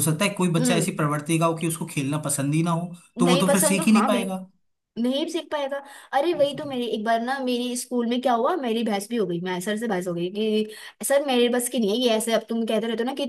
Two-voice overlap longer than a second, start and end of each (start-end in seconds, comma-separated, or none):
3.2-4.4